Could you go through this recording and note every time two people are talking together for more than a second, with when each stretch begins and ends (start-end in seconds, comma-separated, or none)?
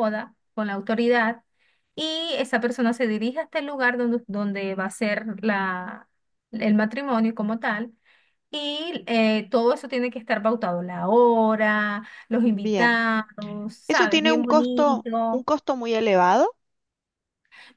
13.9-15.4